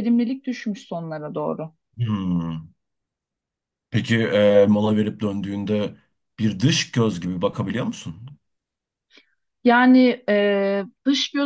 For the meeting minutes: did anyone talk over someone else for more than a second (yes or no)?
no